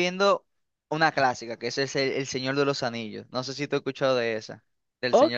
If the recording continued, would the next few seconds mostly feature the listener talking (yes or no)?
yes